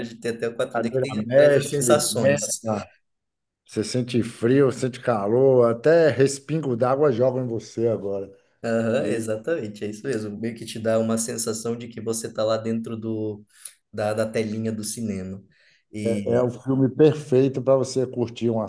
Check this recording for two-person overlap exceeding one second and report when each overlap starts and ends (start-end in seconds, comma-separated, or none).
0.7-2.5